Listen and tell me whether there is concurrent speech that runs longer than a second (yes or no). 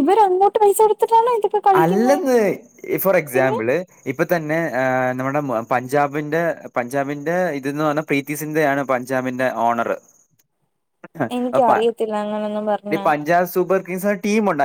yes